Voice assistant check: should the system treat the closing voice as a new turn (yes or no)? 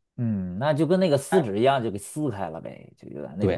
yes